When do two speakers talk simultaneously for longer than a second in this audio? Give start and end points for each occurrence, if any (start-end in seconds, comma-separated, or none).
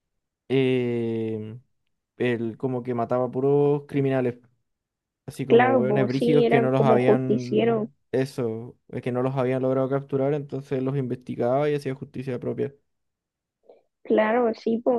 5.5-7.9